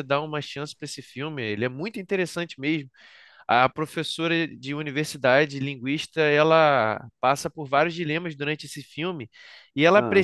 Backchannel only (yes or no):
yes